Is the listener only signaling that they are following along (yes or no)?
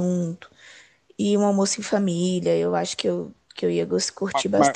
no